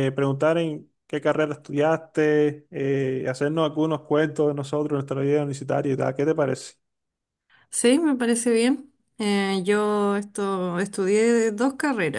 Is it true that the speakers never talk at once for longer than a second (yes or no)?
yes